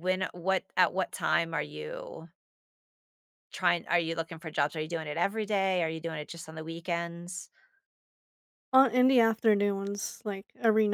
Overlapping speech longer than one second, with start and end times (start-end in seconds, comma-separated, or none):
none